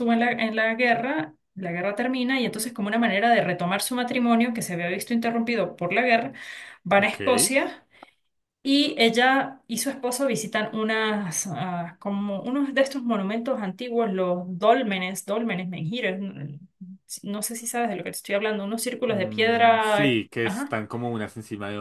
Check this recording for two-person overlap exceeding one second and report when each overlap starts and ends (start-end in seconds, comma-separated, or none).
19.1-20.7